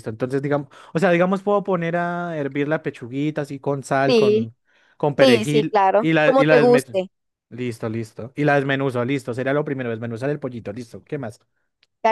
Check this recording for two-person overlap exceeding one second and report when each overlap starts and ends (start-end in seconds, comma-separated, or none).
5.2-7.0